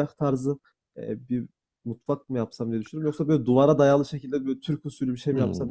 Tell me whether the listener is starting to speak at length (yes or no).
yes